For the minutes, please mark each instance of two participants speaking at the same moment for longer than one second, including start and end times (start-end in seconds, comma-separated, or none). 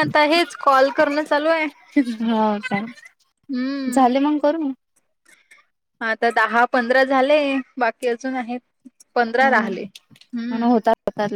9.4-10.8